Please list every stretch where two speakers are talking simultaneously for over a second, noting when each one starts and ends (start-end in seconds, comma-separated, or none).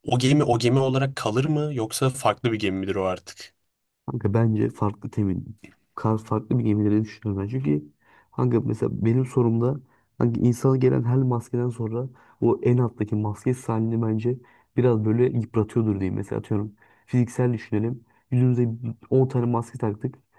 none